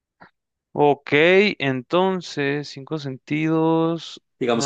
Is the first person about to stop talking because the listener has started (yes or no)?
yes